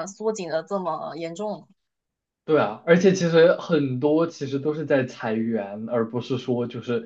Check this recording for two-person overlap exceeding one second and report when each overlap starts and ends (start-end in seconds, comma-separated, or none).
none